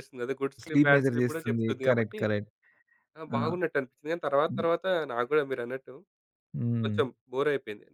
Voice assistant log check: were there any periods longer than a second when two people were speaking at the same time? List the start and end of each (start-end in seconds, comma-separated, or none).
0.6-2.2